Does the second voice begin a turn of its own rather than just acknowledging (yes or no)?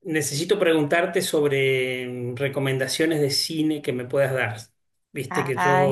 no